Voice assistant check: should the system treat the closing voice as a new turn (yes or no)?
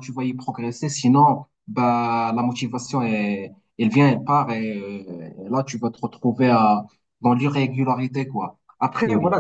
no